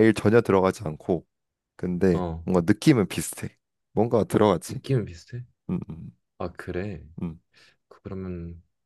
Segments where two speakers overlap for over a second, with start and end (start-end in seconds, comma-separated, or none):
none